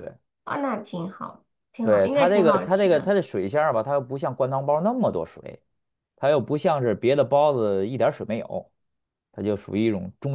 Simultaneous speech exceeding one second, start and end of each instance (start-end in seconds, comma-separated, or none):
1.8-3.1